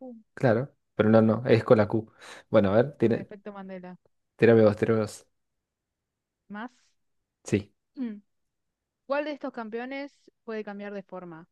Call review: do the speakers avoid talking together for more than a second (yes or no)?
yes